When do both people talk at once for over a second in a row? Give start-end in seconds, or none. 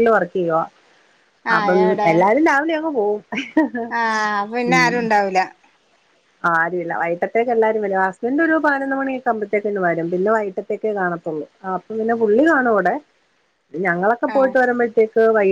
none